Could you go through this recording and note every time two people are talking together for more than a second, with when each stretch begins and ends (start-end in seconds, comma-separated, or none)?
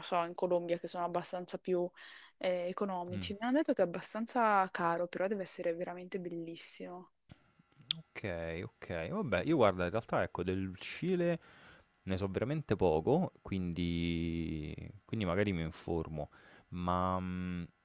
none